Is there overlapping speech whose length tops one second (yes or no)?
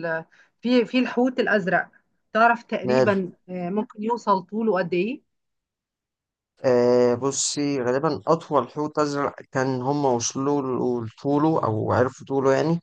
no